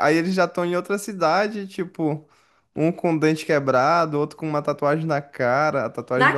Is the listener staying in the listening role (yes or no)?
yes